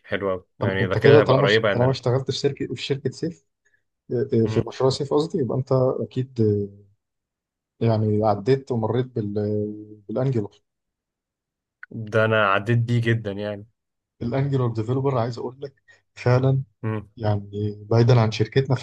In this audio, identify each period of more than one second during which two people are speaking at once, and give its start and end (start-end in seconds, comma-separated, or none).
0.6-2.0